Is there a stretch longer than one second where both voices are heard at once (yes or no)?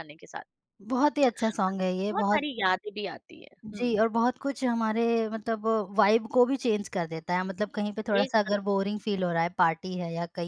no